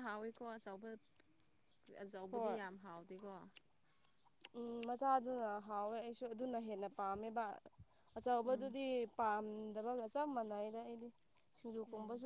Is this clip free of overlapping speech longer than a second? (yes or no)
yes